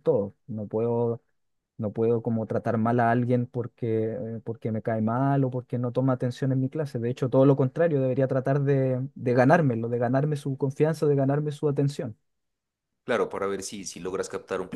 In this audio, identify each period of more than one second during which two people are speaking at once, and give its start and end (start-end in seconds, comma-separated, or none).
none